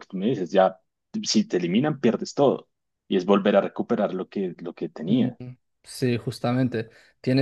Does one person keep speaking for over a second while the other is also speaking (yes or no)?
no